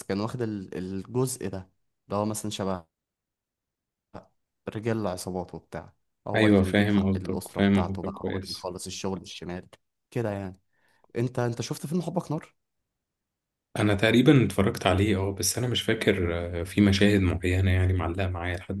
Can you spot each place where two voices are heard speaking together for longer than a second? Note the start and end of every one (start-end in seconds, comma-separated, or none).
6.3-8.7